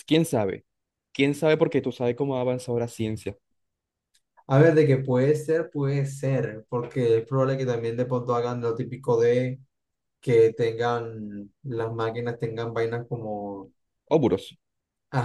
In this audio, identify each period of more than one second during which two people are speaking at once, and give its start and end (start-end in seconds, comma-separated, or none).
none